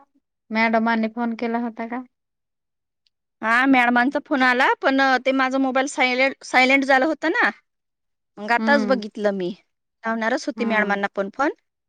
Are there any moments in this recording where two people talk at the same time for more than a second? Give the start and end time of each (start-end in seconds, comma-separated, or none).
none